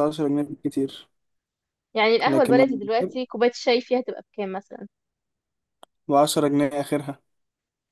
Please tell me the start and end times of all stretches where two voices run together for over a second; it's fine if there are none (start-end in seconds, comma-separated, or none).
none